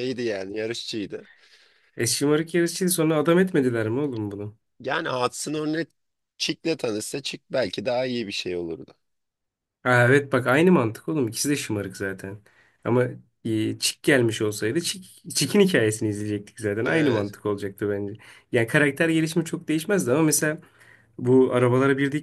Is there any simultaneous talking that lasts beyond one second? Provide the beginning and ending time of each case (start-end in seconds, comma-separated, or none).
none